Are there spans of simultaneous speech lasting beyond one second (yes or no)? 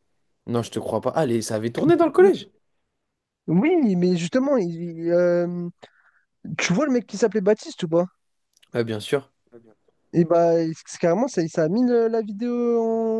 no